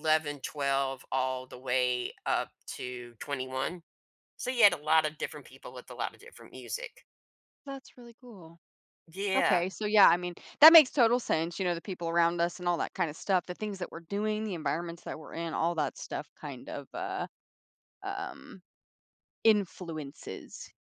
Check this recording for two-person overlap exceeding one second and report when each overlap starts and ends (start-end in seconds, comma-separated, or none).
none